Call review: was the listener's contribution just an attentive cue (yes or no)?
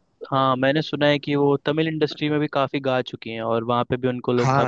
no